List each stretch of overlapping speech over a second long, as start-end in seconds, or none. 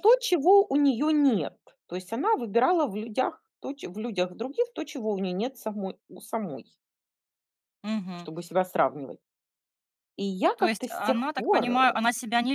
10.6-11.9